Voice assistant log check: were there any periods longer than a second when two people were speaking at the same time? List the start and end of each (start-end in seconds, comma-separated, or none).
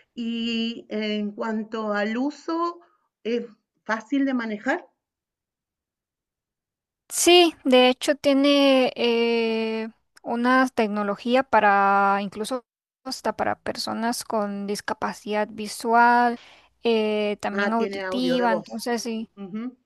17.5-18.7